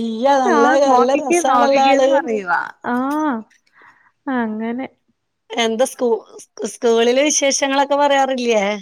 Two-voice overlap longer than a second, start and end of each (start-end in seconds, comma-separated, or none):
0.6-2.1